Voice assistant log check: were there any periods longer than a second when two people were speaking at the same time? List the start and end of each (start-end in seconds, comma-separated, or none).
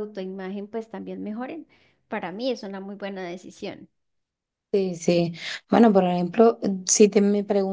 none